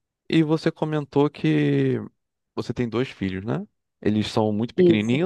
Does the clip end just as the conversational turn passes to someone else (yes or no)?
no